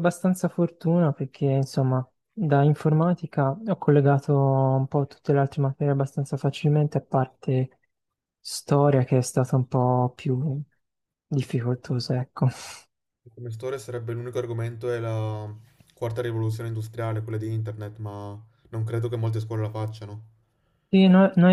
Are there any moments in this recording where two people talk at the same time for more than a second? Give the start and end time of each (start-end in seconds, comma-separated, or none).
none